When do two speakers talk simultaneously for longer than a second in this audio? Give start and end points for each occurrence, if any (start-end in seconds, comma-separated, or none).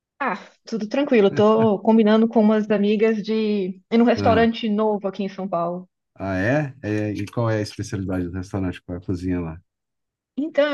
none